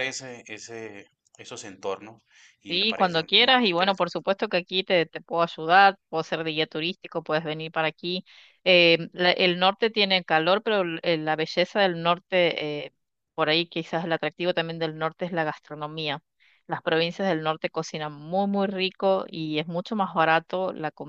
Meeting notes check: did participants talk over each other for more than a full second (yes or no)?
yes